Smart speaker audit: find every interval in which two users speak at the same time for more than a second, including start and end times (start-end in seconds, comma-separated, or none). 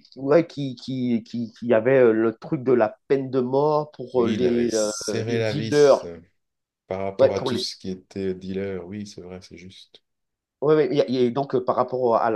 4.1-6.1